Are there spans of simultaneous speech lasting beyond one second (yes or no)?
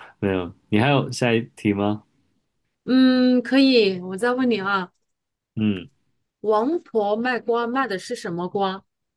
no